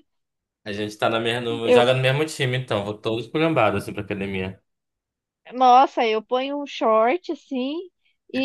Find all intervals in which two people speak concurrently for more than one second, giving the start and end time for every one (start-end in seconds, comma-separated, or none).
none